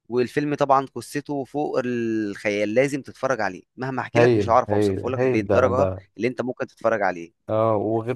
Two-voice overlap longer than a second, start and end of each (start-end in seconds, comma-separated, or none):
4.2-6.0